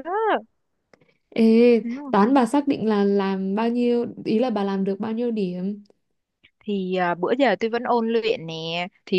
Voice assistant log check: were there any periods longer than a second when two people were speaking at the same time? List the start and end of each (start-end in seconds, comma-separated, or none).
none